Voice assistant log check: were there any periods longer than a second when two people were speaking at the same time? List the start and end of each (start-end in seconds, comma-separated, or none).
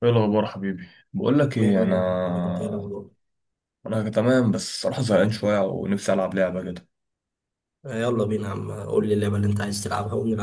1.5-2.9